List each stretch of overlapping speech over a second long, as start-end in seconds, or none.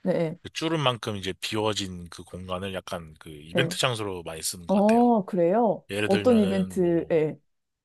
5.9-7.1